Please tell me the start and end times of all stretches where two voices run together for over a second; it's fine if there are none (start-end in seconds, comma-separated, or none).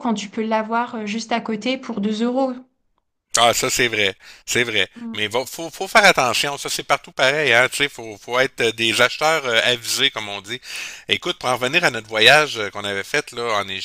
none